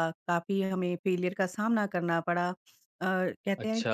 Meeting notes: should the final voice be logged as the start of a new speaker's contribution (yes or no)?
no